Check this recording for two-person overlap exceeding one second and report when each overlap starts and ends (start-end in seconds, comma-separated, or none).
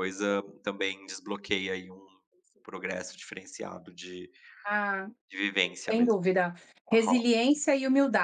none